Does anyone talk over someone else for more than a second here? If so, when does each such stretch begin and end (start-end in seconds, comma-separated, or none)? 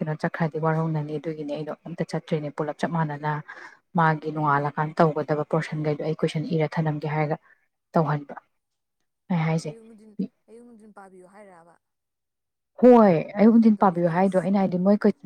none